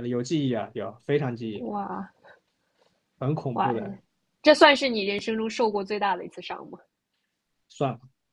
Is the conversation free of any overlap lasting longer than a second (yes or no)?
yes